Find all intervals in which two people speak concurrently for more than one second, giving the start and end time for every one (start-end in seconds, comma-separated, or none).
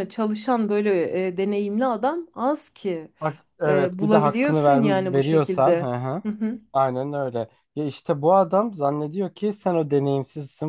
3.7-5.9